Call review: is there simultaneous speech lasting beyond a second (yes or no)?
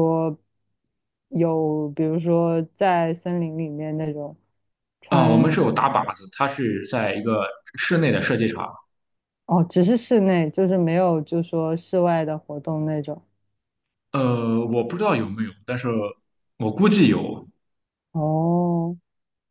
no